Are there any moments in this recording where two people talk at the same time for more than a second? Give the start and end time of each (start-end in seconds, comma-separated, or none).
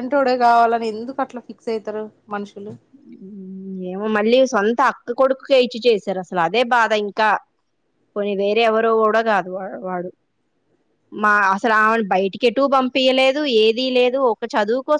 none